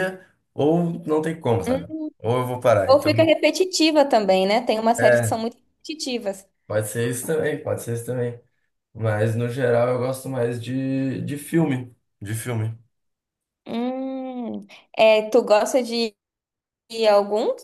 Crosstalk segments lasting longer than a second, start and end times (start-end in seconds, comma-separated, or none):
none